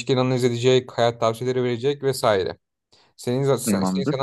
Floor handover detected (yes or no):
no